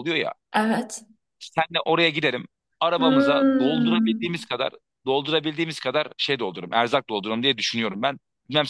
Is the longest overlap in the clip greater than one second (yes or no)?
yes